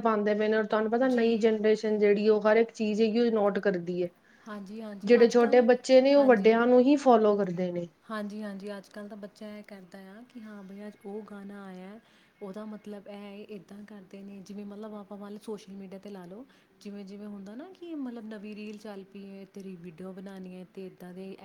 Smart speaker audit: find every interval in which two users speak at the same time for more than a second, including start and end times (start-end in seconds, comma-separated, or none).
5.1-6.6